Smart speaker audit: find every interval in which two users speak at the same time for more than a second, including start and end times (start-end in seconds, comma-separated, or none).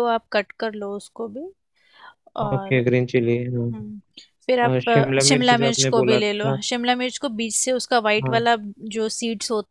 4.7-6.6